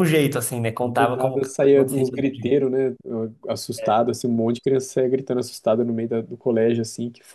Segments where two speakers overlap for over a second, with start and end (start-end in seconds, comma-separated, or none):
0.8-2.6